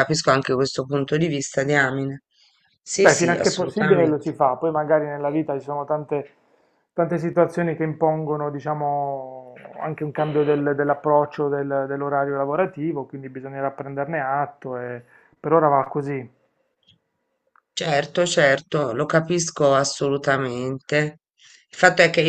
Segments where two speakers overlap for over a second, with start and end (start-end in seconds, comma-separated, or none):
3.0-4.3